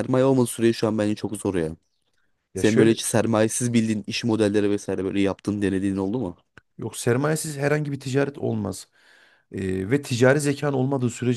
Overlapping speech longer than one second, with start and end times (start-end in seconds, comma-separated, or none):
none